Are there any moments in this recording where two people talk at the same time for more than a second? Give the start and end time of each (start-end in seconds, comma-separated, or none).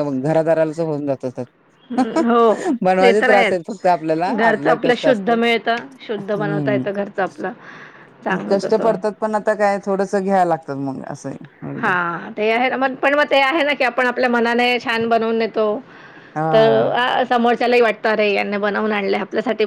3.7-5.4